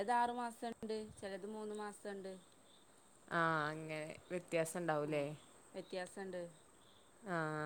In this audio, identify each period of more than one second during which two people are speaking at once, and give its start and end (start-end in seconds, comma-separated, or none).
none